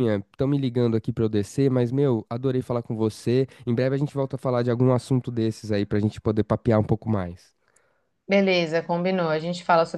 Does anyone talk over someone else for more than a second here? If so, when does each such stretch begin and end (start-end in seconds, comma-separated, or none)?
none